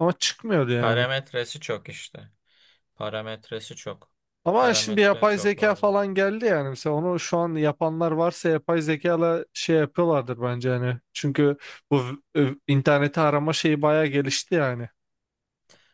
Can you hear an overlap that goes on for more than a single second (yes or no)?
yes